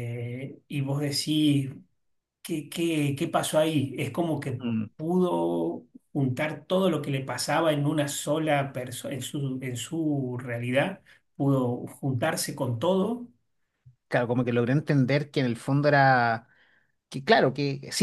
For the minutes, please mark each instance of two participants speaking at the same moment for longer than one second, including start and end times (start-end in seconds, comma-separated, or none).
none